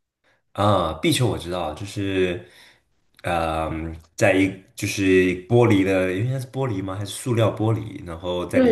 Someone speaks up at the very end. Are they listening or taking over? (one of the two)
taking over